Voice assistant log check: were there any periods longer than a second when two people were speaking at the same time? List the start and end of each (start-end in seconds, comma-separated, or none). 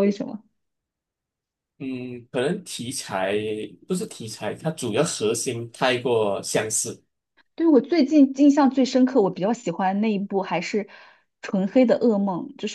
none